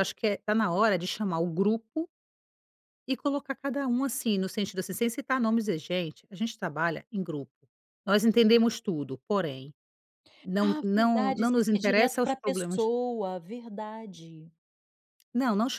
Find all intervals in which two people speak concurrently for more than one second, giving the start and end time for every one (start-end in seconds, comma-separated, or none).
10.6-12.8